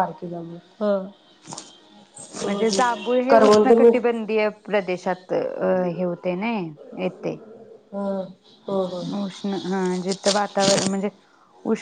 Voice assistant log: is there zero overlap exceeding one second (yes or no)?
no